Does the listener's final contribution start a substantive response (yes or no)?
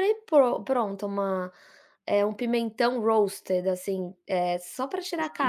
no